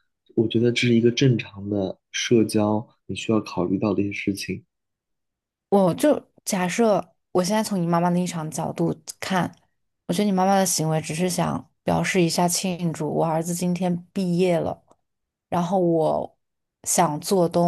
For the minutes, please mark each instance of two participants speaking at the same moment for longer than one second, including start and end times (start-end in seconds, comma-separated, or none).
none